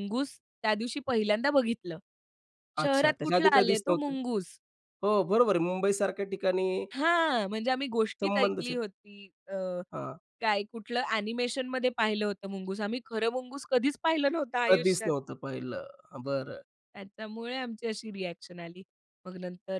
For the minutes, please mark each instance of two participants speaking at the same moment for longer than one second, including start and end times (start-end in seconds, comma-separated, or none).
2.8-4.1